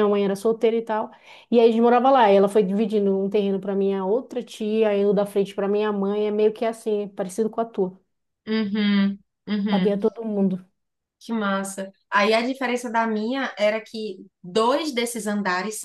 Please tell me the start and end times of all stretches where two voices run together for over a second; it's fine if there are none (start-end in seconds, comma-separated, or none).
none